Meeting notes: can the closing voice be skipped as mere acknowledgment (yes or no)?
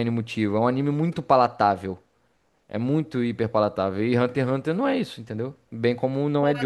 no